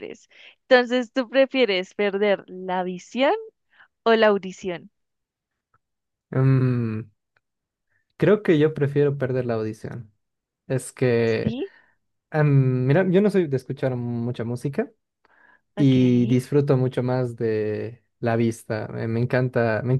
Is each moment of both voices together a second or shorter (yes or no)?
yes